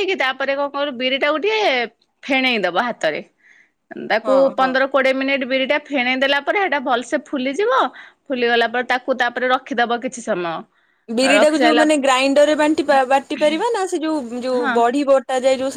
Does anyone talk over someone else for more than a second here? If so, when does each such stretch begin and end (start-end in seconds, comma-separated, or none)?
none